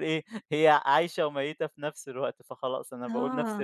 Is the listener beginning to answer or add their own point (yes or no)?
yes